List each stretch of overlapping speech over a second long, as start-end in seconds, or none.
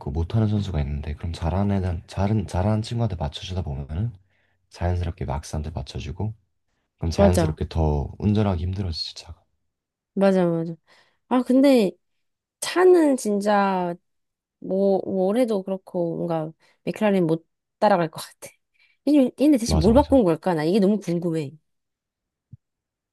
none